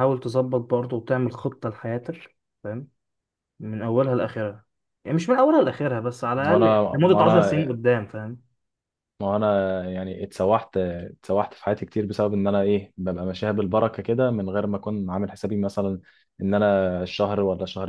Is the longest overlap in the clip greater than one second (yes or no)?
yes